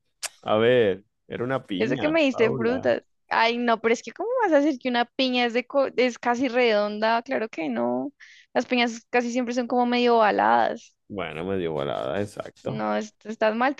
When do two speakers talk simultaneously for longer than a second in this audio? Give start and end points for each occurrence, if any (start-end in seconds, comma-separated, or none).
1.7-3.0